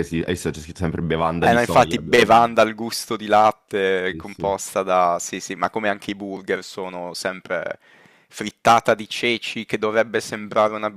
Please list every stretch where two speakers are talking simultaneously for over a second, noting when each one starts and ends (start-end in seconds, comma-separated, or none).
1.4-2.6